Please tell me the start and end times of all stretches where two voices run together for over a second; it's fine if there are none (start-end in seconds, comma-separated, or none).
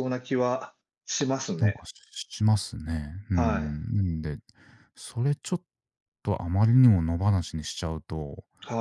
none